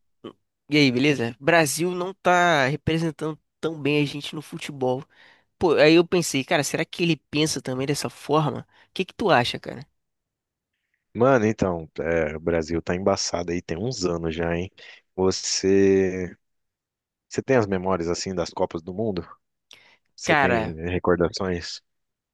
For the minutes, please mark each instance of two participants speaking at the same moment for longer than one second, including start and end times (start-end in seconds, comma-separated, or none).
none